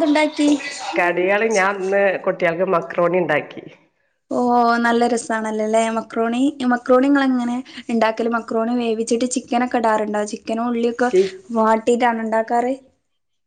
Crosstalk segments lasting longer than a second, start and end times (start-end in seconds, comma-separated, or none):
none